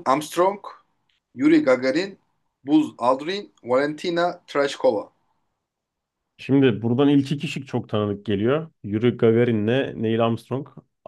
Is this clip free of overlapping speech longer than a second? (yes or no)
yes